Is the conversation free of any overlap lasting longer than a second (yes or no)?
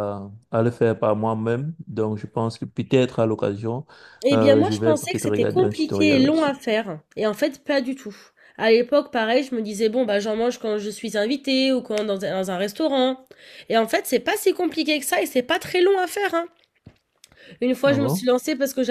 no